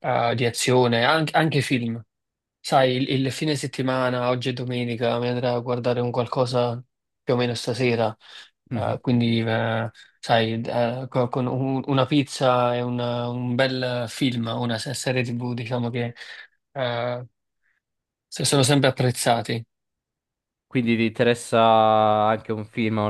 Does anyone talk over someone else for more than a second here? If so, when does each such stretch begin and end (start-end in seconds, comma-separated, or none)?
none